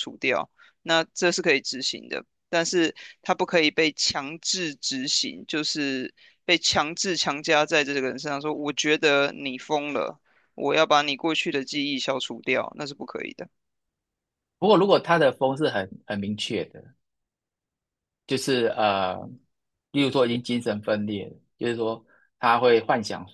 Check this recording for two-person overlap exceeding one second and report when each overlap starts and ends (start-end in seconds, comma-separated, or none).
none